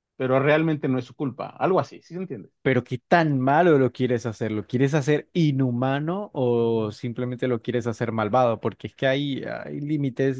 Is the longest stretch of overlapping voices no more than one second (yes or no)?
yes